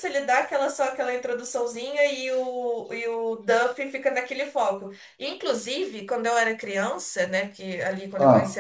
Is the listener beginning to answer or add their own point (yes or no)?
no